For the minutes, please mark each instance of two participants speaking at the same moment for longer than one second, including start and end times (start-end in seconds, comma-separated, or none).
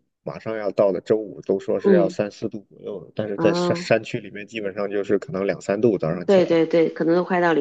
none